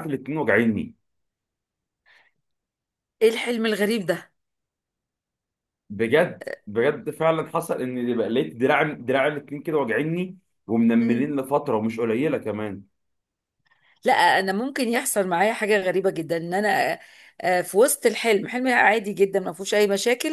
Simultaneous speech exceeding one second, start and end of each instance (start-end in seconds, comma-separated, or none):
none